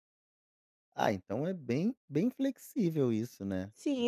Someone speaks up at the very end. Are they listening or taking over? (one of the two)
taking over